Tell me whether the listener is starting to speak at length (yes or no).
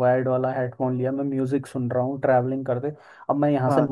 no